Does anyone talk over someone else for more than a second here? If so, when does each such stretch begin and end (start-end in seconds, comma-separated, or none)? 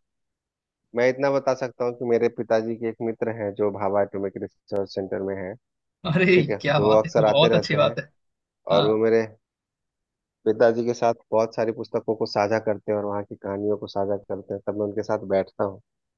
6.4-8.0